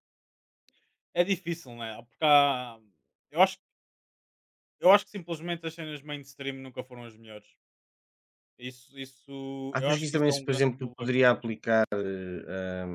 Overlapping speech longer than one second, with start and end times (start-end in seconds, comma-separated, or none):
9.7-11.3